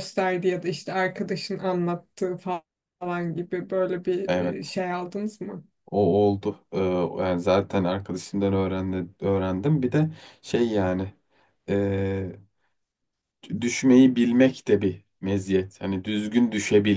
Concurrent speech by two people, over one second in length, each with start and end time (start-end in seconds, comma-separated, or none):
none